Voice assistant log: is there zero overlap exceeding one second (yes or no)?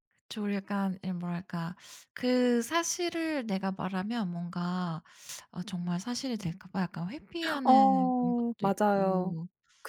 no